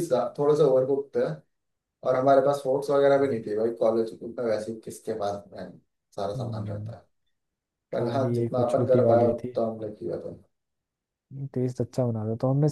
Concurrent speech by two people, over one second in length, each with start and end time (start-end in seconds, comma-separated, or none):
7.9-9.6